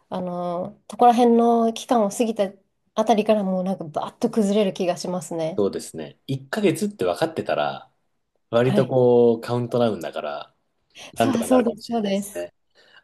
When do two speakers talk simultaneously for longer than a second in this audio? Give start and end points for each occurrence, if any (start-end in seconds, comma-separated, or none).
11.2-12.5